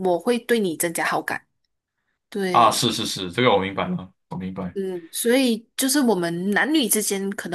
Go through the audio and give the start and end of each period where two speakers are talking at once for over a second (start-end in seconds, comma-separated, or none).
none